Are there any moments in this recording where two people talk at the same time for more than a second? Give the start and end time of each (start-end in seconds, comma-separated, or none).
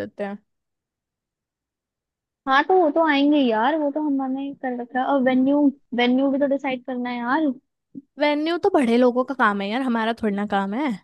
none